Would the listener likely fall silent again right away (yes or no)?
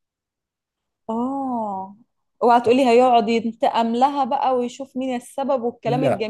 yes